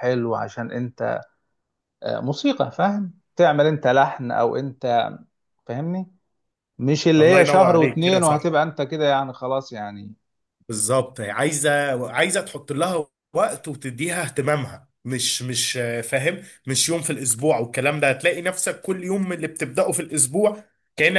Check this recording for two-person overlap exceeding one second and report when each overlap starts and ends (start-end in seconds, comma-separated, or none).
7.2-8.5